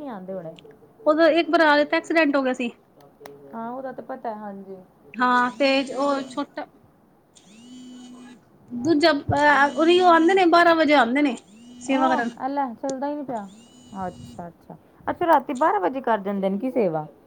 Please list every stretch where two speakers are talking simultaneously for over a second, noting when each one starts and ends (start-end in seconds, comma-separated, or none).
none